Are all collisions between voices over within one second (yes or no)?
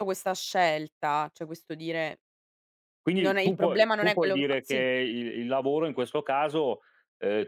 no